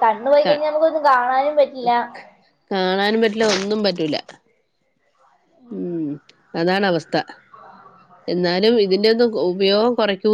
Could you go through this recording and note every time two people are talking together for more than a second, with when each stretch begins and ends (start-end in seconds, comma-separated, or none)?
none